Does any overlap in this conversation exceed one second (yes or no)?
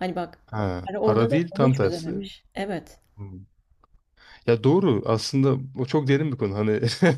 yes